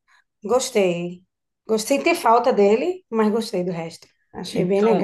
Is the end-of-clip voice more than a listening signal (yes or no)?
yes